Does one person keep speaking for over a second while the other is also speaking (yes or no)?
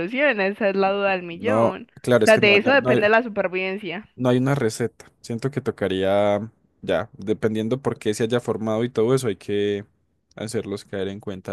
yes